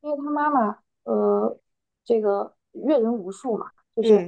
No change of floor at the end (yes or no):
yes